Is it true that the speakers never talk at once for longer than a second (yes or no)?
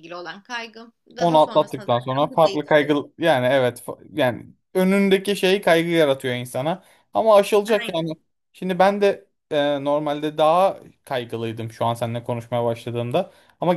no